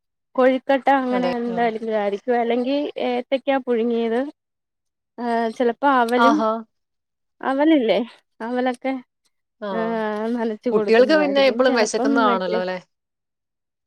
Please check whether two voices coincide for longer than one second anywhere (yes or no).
yes